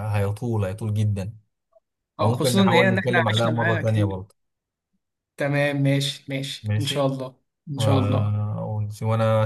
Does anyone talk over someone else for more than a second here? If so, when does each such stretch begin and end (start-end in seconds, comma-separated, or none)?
2.2-4.2